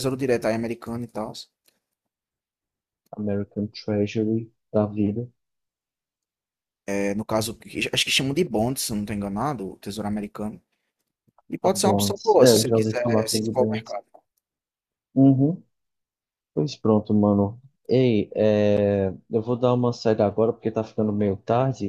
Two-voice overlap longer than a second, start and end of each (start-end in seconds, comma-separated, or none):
11.6-13.9